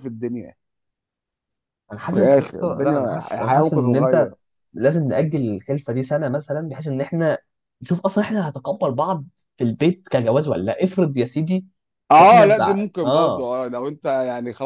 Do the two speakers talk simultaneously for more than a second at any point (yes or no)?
yes